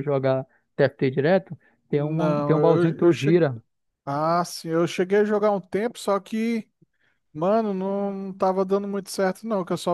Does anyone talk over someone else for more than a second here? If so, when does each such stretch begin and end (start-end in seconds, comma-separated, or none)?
1.9-3.4